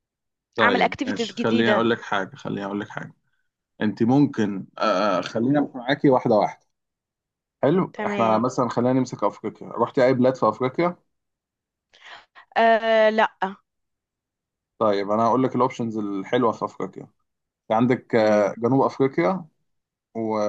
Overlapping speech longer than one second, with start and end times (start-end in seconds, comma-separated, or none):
0.6-1.9